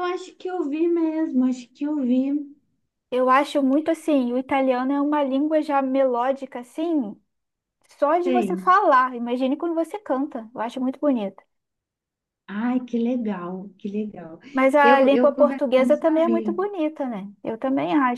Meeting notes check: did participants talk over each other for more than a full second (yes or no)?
yes